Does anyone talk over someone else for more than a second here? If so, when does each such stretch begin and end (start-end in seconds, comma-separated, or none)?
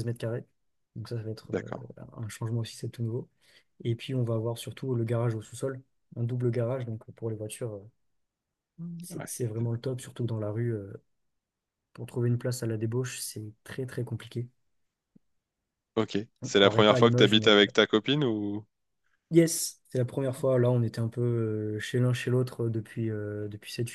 16.4-17.6